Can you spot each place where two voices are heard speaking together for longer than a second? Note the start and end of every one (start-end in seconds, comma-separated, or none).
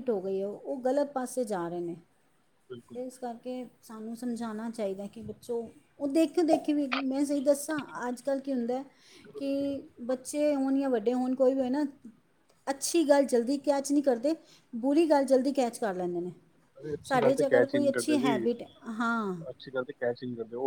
17.1-18.4